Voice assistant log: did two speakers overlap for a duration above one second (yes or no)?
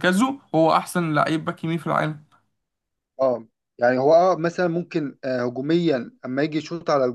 no